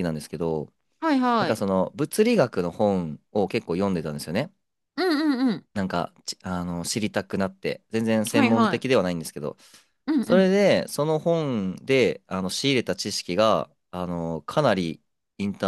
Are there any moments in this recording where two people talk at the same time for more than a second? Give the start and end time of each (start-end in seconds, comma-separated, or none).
none